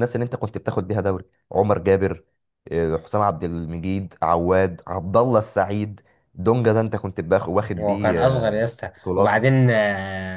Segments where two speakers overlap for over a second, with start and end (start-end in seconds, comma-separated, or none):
7.8-9.5